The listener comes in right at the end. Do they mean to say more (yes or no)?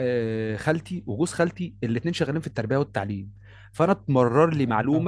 no